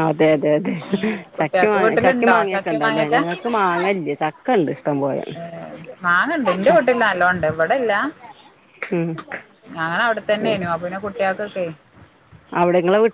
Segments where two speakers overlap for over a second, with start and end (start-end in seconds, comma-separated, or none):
1.4-3.2